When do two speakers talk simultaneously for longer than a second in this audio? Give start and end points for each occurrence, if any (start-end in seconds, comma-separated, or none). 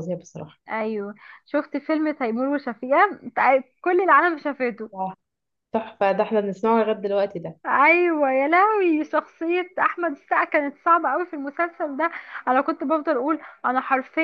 none